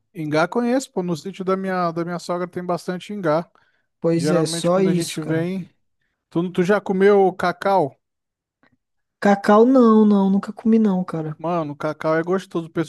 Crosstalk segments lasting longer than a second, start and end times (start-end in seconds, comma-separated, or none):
4.1-5.5